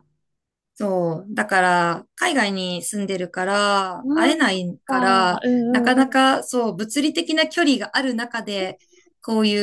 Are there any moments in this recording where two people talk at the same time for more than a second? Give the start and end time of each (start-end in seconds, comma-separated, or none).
4.0-6.2